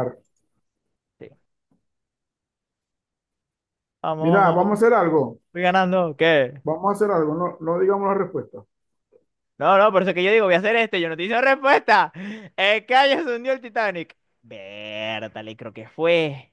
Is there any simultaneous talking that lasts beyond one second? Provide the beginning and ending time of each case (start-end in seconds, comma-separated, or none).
none